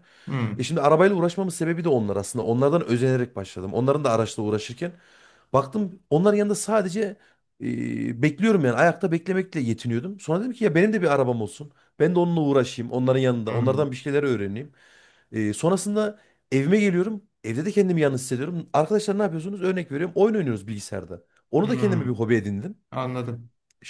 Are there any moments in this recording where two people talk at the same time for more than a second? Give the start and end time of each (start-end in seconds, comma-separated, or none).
none